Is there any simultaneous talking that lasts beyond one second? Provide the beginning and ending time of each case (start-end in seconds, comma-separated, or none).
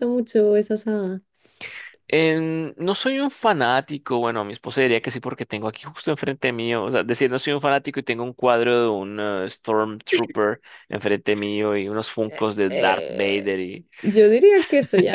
12.2-13.5